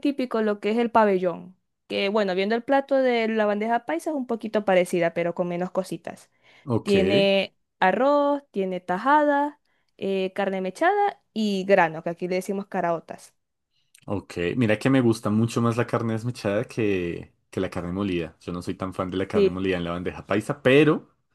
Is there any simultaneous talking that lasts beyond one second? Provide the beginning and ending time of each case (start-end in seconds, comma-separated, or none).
none